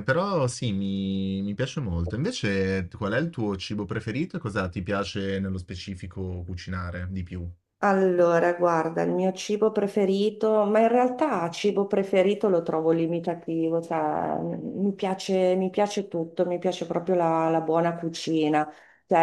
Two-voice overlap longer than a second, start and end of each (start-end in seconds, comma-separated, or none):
none